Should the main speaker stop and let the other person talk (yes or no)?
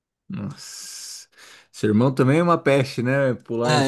yes